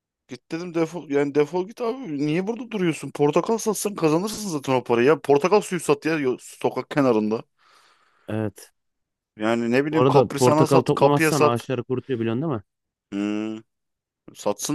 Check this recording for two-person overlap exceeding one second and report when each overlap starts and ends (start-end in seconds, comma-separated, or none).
9.9-11.7